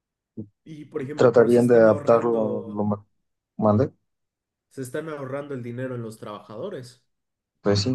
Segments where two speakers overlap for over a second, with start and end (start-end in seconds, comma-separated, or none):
1.1-2.9